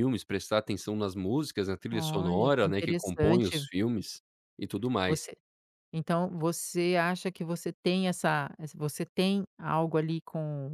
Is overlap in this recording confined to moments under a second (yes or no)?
no